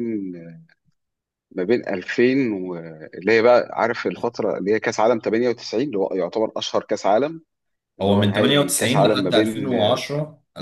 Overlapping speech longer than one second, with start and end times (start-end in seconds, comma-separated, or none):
8.0-9.7